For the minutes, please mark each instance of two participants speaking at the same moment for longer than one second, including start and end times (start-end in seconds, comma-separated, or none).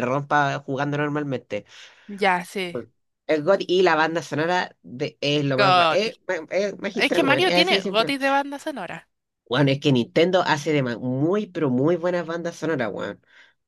6.9-8.1